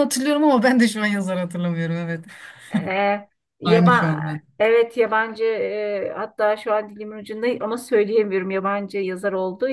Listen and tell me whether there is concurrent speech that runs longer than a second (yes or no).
no